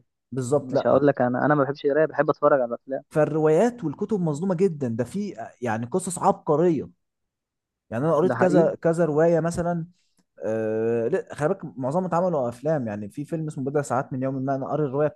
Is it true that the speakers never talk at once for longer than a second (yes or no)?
yes